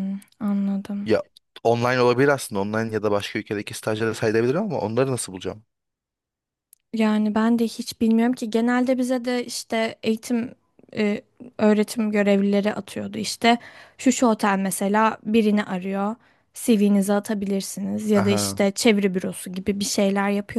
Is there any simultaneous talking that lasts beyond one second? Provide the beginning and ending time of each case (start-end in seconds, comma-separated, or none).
none